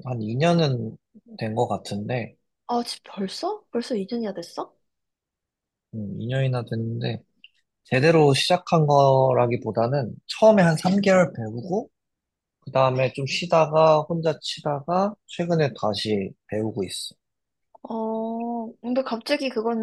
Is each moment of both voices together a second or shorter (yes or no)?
yes